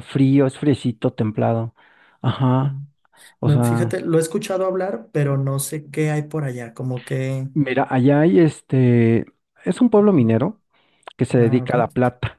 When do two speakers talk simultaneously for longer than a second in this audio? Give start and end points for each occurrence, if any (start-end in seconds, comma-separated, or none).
none